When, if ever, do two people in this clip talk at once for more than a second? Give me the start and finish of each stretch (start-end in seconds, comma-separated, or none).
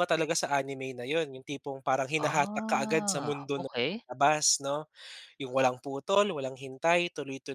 2.2-3.7